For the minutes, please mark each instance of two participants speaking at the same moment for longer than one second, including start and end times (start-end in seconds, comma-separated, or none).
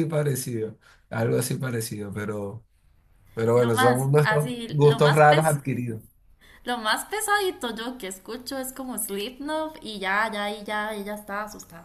3.5-5.6